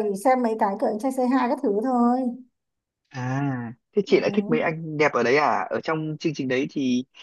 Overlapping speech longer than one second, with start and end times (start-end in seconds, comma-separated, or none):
none